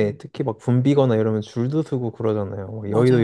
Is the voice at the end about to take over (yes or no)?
yes